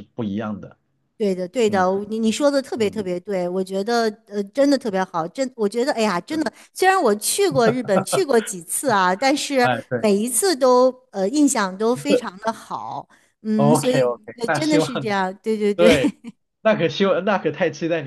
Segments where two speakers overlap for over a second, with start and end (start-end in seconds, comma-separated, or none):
13.6-14.9